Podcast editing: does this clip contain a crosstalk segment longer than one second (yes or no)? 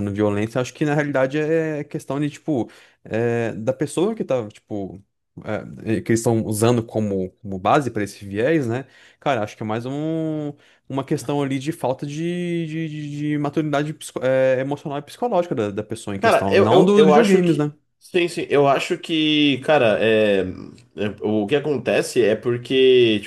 yes